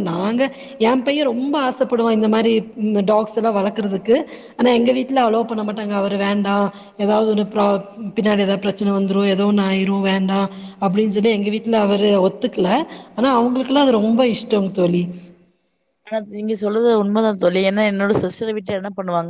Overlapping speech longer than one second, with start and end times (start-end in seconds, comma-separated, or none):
none